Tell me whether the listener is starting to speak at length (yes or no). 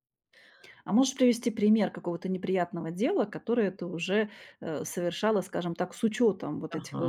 yes